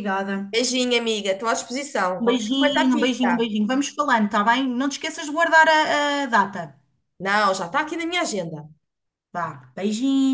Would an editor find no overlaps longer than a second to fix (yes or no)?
no